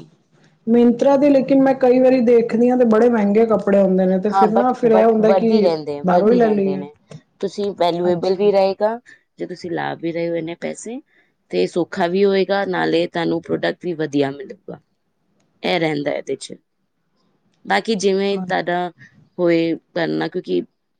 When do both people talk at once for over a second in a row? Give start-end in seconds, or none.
4.3-6.8